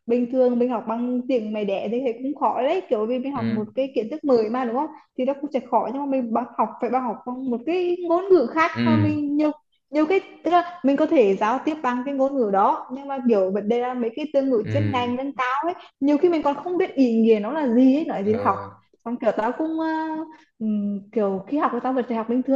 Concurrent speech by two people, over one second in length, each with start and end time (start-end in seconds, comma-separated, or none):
none